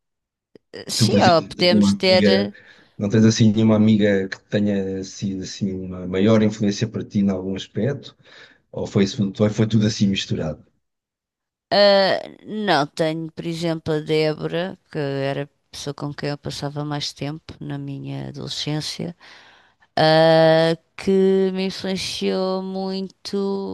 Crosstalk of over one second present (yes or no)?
yes